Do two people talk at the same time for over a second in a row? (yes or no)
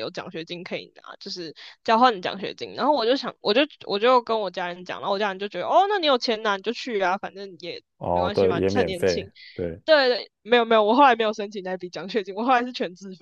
yes